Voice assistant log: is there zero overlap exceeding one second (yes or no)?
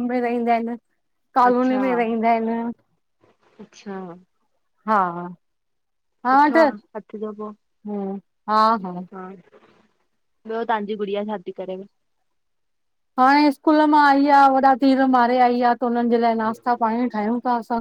yes